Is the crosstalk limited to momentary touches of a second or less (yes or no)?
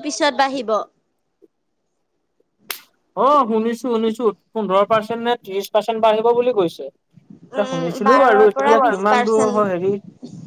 no